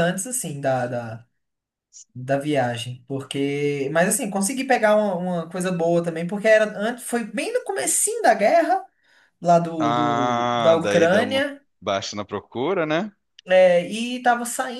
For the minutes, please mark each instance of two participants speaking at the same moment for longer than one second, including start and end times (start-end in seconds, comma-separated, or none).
9.8-11.4